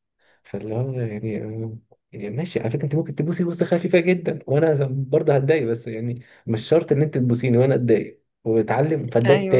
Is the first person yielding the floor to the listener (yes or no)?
no